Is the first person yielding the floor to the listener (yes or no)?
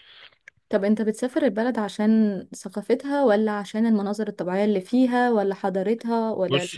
yes